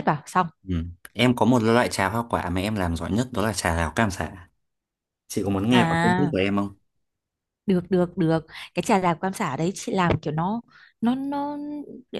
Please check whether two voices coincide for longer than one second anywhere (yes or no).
no